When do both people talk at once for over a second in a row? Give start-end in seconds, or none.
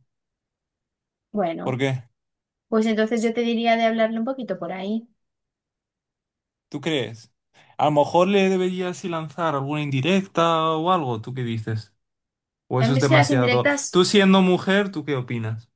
12.8-14.0